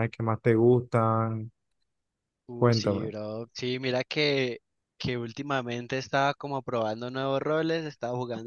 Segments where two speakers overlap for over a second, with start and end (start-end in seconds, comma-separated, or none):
none